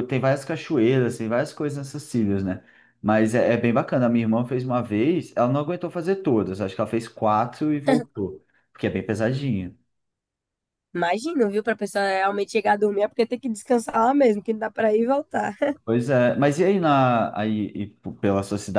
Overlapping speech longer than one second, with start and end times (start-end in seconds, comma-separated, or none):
none